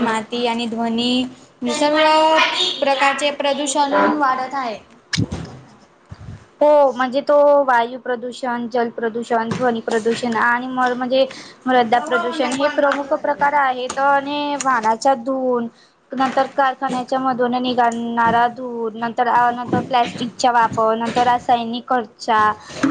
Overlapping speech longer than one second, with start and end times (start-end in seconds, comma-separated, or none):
none